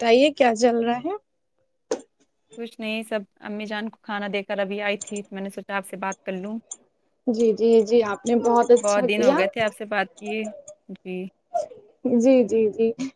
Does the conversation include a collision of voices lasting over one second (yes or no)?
no